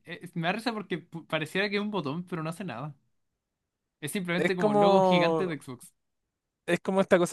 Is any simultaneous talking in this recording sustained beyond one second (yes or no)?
yes